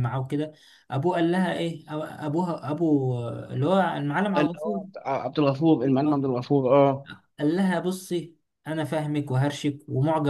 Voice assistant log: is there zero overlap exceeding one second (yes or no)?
yes